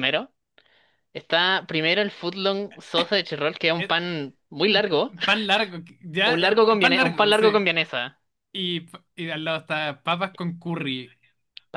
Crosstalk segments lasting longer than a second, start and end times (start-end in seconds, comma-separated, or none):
6.2-7.7